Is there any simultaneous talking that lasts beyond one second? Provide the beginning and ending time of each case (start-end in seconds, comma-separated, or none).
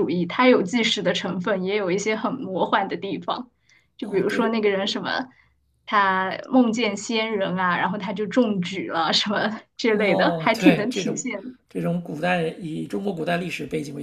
9.9-11.3